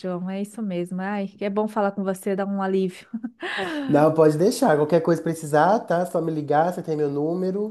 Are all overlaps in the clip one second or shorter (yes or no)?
yes